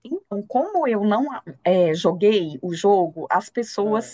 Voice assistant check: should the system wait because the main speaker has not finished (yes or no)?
yes